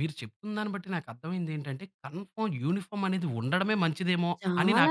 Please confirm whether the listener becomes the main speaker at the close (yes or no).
yes